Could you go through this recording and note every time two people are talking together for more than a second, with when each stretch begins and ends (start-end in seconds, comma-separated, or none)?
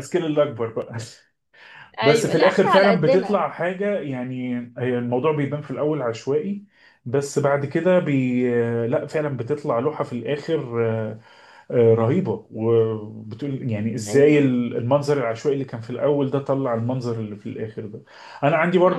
2.0-3.4